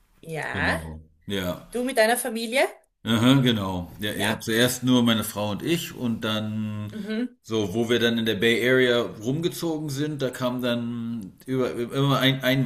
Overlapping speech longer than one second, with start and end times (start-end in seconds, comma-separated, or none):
none